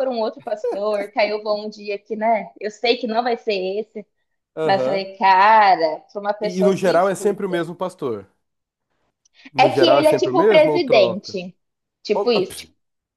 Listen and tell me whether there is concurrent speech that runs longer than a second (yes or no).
yes